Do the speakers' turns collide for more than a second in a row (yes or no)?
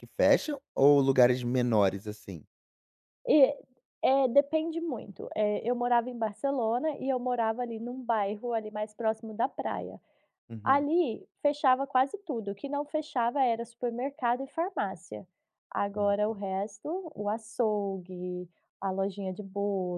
no